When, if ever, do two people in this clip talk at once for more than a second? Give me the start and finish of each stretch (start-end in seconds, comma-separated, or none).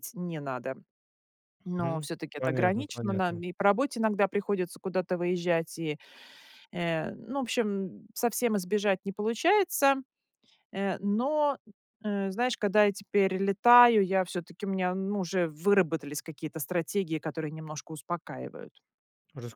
1.8-3.4